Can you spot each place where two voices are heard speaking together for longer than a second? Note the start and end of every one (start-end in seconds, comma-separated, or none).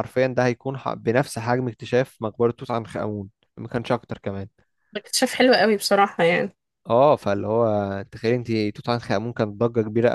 none